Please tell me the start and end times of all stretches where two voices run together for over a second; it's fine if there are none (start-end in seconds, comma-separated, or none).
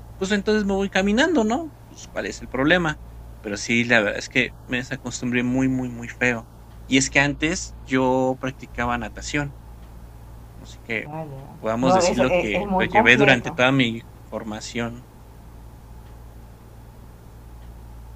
11.8-13.6